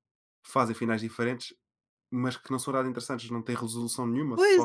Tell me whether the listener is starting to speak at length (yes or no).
yes